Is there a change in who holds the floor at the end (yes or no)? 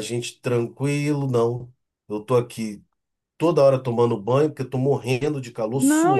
yes